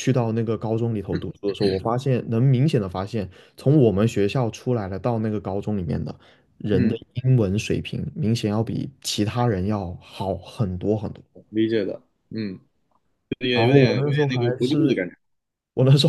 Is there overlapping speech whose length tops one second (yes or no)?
yes